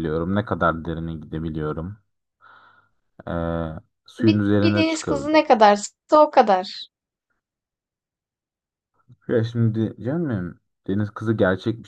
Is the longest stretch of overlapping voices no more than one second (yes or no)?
no